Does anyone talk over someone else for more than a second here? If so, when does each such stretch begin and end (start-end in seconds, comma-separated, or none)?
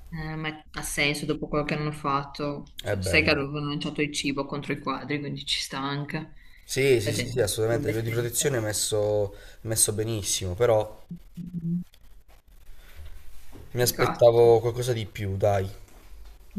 7.0-8.6